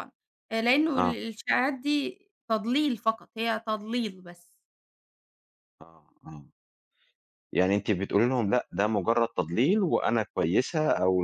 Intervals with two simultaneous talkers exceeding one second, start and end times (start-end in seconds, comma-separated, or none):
none